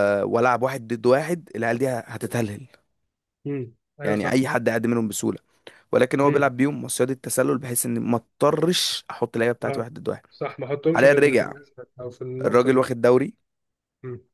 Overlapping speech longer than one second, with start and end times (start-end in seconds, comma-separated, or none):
none